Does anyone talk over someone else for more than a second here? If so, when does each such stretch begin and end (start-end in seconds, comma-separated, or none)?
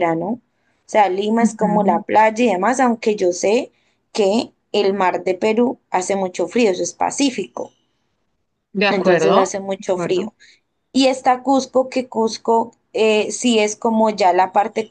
8.9-10.3